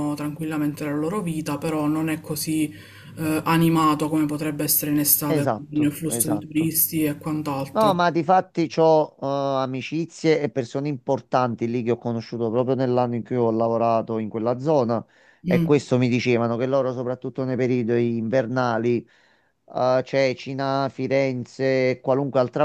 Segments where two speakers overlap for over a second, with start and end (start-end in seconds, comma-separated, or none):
5.3-6.7